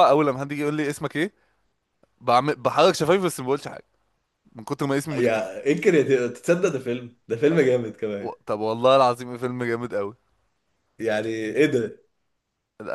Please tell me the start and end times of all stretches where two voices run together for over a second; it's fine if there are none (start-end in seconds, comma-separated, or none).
none